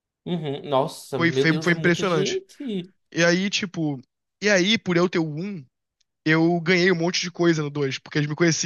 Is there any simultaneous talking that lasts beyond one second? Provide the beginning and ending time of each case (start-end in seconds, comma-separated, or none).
1.2-2.4